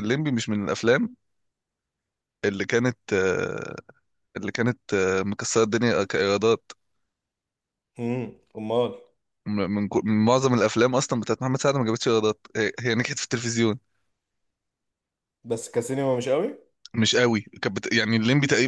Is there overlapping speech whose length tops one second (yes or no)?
no